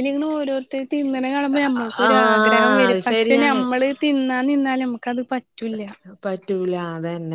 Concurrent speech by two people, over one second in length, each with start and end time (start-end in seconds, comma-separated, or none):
1.6-3.6